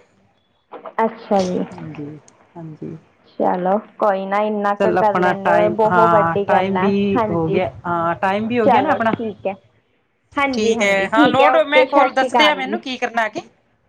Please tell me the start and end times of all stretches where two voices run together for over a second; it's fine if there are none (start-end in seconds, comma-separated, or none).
4.8-7.6, 10.5-12.8